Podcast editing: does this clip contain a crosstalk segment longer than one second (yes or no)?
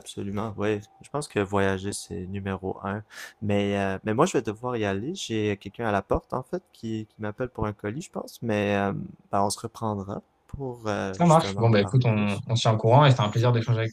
yes